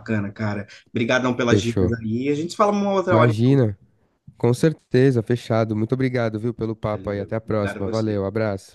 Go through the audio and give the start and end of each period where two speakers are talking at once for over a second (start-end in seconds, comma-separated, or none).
6.9-8.2